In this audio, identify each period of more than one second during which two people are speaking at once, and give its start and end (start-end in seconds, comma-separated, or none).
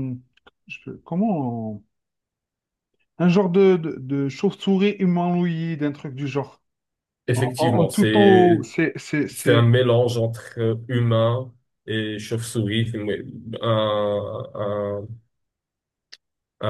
7.3-8.7